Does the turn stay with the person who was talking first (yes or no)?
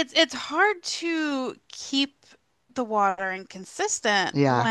yes